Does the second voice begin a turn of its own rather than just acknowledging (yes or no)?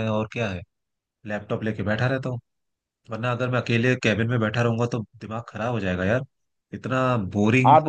no